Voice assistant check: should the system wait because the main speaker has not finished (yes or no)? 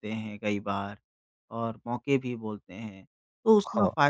yes